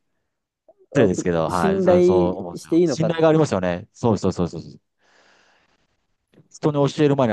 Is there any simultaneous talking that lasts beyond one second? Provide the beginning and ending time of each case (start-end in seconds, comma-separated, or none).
0.9-3.1